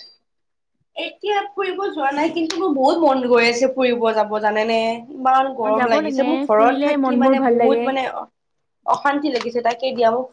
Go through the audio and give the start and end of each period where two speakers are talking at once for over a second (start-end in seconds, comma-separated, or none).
5.6-7.8